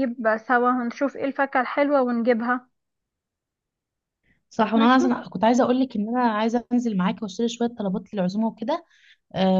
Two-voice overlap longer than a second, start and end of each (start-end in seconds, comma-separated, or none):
none